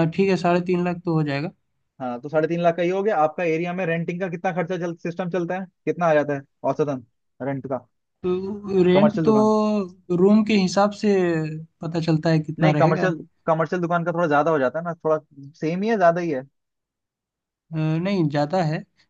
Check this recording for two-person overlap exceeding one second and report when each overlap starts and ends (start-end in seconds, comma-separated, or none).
none